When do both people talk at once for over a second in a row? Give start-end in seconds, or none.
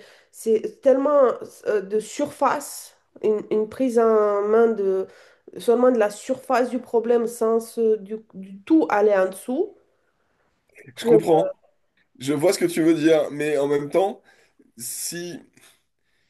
none